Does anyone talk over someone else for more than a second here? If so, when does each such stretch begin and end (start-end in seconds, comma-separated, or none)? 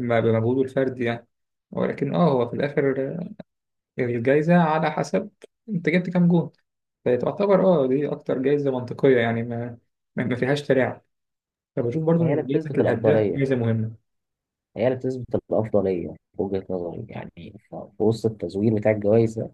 12.2-13.4